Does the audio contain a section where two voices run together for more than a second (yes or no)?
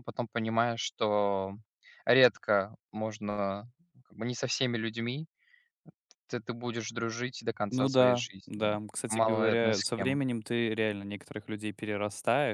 yes